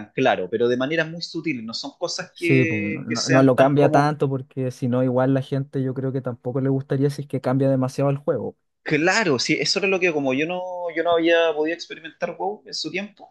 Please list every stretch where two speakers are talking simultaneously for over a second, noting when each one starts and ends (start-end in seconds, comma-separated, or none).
2.4-4.2